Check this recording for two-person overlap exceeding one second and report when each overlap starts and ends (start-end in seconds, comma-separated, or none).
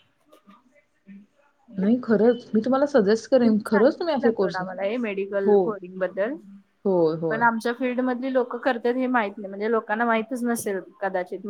3.4-4.7